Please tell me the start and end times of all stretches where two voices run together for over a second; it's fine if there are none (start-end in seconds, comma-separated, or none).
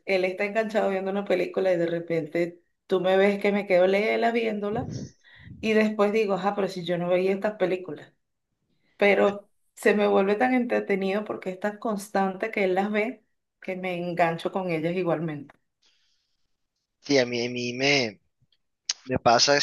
none